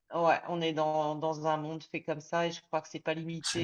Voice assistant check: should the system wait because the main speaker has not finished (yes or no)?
yes